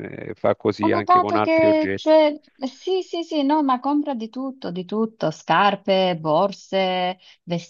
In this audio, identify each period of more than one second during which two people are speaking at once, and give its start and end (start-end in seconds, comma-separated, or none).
0.8-2.2